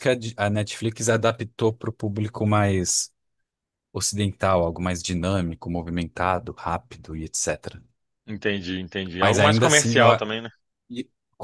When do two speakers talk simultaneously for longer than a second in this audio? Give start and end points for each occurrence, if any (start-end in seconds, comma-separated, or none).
9.2-10.4